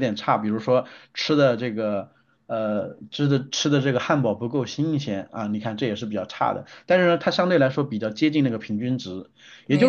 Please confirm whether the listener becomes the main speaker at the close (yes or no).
no